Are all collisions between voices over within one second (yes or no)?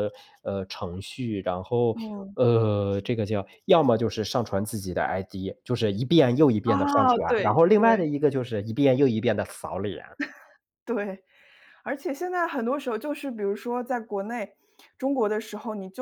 no